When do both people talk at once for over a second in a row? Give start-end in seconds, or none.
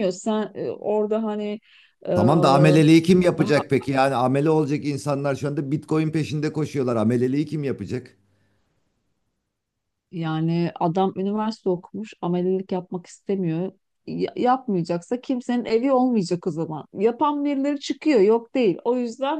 none